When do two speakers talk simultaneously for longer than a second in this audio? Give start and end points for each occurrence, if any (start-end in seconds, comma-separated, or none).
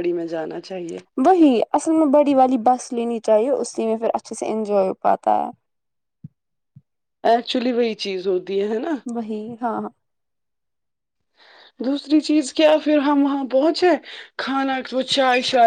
none